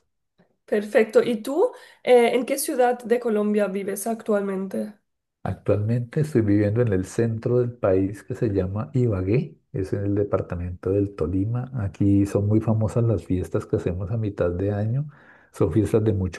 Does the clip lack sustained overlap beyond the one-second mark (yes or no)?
yes